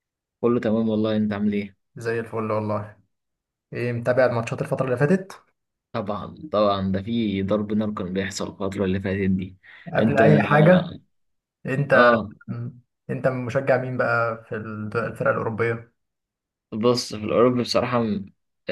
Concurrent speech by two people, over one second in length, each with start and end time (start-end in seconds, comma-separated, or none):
none